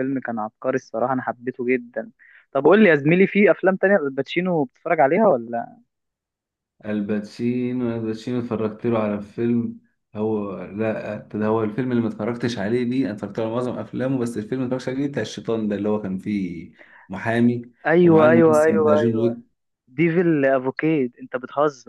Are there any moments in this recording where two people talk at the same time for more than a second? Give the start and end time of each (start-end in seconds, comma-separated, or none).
18.0-19.4